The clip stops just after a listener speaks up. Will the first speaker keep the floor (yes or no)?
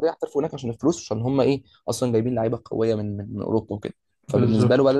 yes